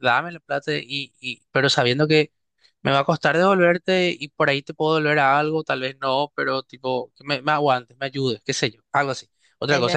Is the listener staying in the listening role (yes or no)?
yes